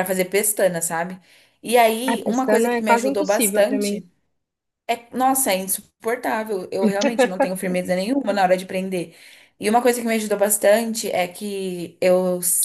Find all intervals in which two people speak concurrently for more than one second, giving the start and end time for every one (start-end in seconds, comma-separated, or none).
2.1-4.1